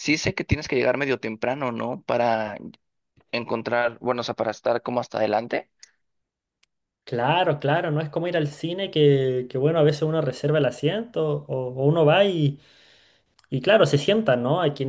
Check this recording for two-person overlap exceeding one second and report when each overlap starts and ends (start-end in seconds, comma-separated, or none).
none